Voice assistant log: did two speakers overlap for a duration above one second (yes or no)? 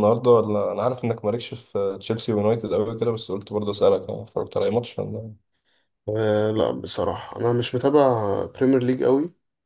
no